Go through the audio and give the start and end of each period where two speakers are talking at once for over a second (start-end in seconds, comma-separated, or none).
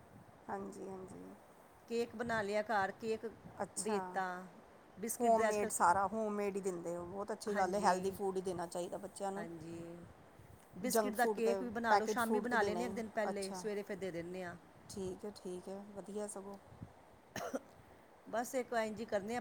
10.9-13.6